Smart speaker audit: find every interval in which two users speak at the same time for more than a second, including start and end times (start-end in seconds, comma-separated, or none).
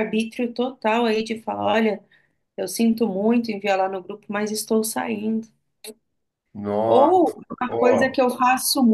6.9-8.2